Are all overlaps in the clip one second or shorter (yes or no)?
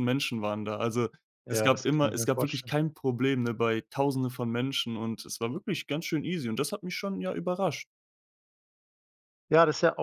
no